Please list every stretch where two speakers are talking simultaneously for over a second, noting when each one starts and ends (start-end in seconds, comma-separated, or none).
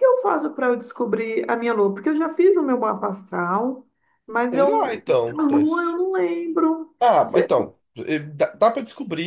4.5-6.0